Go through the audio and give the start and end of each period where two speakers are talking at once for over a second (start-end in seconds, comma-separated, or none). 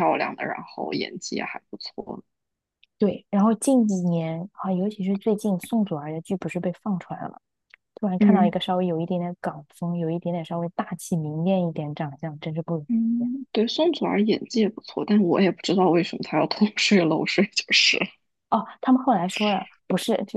none